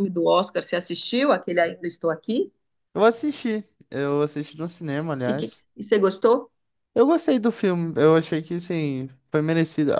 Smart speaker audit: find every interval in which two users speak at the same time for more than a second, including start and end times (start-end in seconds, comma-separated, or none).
none